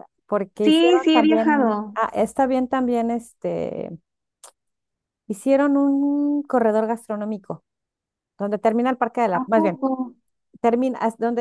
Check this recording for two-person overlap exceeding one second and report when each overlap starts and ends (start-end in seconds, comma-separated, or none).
0.6-2.0